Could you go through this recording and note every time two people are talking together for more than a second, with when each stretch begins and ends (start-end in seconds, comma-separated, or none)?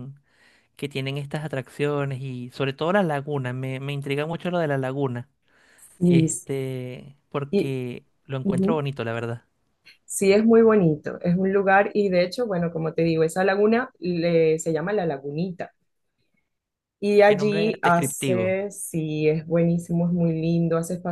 17.2-18.6